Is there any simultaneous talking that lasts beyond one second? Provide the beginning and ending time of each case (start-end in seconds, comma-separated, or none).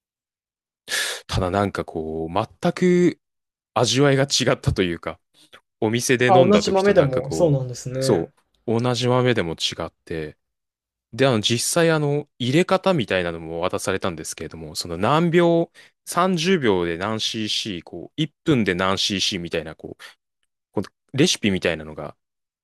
6.2-8.3